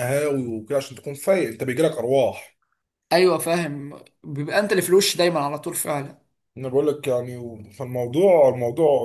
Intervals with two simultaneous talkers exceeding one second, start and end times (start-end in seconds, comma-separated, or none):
none